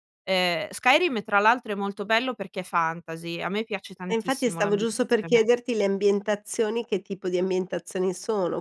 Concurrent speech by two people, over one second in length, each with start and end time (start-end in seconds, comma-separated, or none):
4.1-5.4